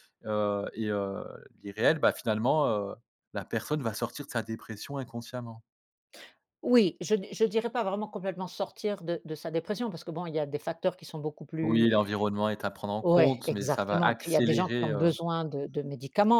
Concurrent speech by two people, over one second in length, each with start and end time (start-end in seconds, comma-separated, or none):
13.0-15.1